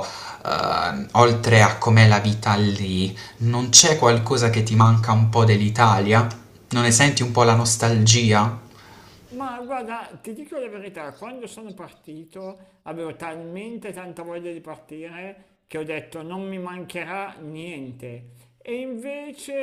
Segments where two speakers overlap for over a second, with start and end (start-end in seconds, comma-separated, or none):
none